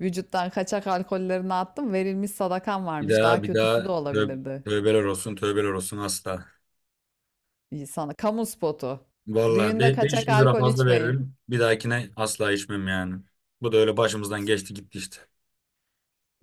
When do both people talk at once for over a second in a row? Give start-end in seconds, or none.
3.0-4.6, 9.5-11.2